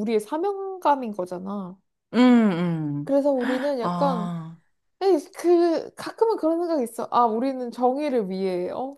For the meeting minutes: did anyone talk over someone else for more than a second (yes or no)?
no